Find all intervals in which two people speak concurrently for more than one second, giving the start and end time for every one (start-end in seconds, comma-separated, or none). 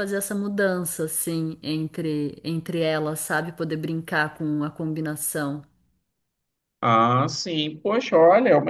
none